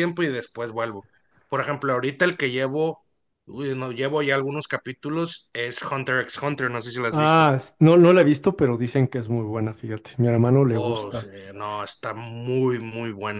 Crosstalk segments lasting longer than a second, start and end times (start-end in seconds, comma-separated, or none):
none